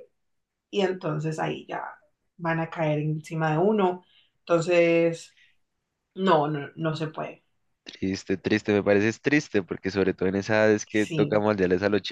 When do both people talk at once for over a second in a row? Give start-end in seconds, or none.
none